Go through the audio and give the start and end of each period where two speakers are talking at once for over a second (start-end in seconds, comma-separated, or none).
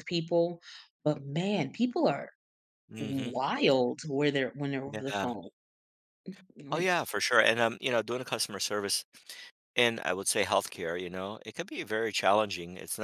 none